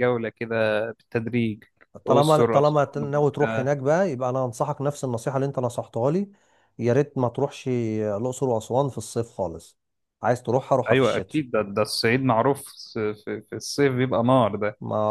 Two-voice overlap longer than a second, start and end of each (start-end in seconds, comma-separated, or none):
2.1-3.7